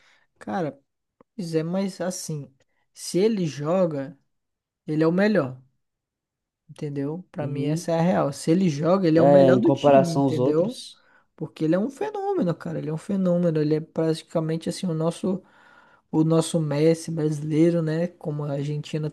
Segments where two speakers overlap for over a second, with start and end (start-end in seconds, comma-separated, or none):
9.2-10.8